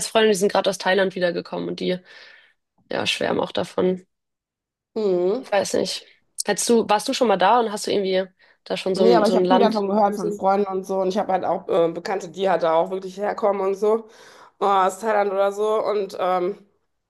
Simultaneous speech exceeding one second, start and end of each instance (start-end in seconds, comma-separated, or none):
8.9-10.4